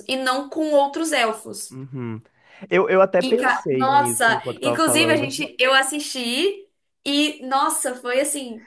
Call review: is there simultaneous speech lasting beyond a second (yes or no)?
yes